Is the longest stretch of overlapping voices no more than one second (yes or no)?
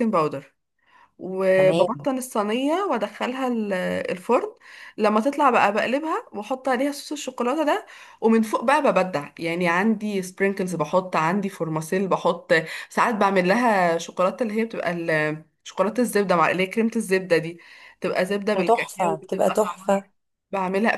no